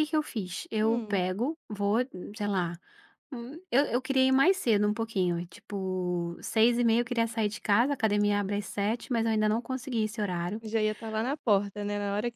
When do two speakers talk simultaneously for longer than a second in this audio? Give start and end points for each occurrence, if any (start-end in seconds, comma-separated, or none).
none